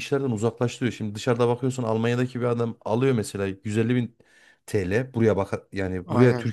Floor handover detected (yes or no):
no